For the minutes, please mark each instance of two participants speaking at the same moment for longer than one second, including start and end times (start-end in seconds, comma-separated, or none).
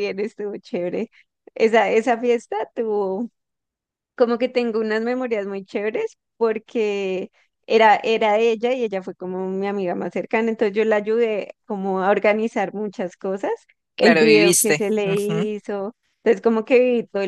14.0-15.5